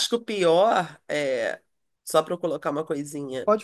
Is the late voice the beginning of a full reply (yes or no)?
no